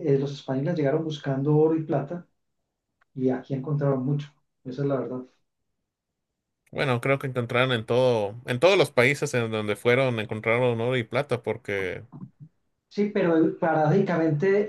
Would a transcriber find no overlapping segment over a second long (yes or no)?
yes